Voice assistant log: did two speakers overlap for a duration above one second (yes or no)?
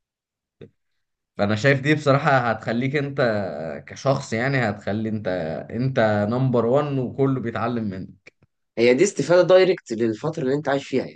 no